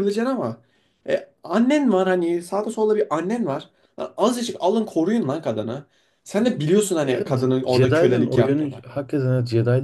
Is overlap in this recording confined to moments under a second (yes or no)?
no